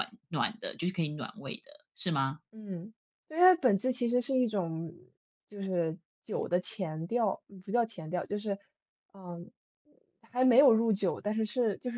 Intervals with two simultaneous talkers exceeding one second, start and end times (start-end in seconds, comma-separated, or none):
none